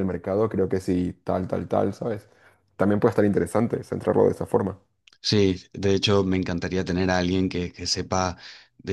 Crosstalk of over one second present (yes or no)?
no